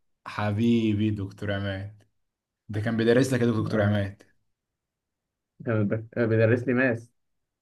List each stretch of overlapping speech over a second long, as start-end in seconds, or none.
none